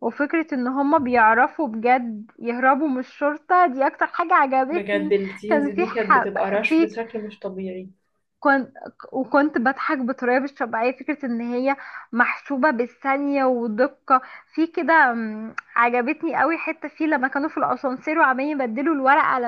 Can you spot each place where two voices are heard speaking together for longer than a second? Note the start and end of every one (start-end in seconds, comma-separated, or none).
4.7-6.9